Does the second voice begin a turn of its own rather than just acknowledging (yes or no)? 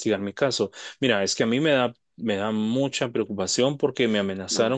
no